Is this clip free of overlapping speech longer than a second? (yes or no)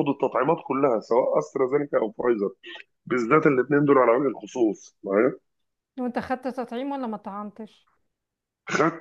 yes